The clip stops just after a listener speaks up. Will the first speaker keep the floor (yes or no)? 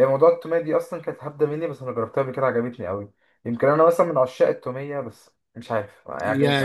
no